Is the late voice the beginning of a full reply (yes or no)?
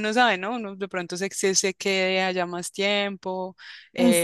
yes